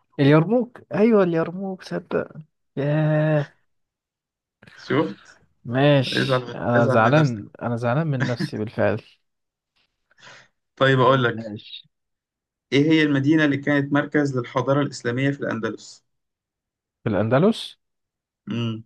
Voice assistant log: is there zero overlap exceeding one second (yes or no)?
no